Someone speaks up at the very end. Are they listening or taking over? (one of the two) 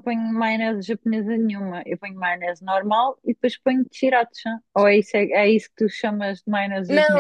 taking over